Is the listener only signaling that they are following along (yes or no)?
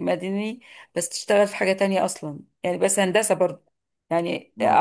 yes